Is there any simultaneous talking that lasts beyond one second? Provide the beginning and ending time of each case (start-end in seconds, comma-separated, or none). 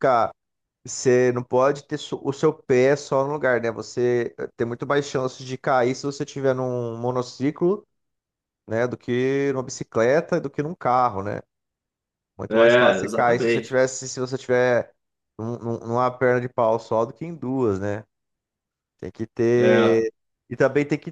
12.5-13.8